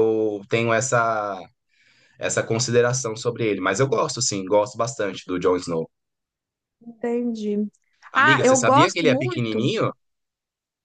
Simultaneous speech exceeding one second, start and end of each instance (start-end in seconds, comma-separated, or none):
8.1-9.7